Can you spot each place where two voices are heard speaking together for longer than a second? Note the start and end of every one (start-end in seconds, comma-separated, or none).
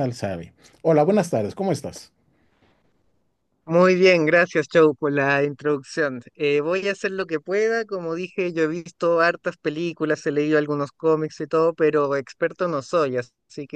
none